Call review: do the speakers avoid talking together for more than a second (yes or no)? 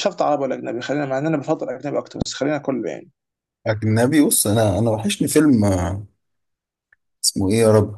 yes